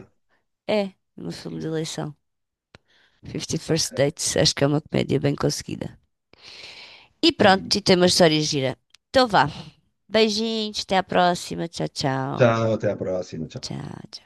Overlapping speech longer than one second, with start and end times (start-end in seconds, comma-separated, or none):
none